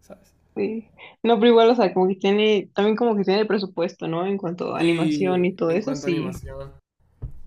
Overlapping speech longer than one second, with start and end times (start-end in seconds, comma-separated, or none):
4.8-6.4